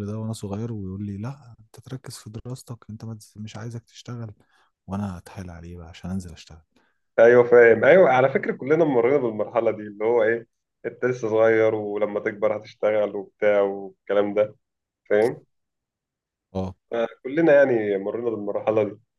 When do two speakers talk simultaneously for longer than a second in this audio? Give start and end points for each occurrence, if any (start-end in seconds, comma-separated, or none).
none